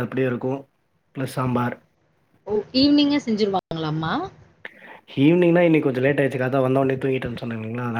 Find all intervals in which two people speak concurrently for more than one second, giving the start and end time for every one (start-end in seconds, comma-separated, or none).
none